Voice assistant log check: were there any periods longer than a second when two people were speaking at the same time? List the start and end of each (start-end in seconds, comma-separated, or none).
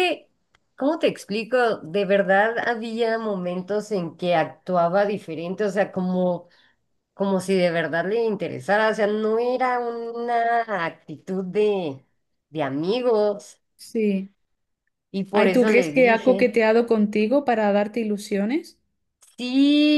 15.3-16.5